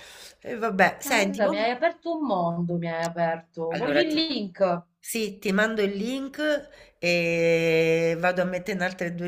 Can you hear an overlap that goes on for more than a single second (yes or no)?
no